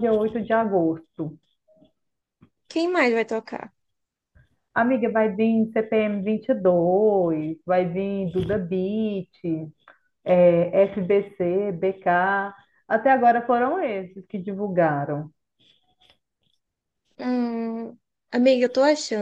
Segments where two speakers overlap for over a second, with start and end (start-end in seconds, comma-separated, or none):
none